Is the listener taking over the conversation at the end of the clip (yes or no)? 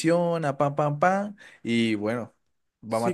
yes